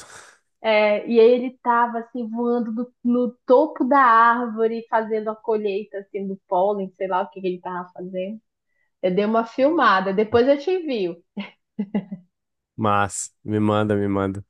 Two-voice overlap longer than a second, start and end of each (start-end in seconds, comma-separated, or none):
none